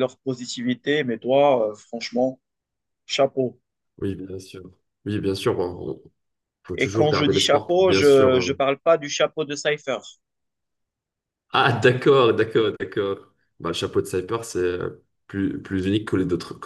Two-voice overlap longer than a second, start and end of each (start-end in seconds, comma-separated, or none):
6.8-8.5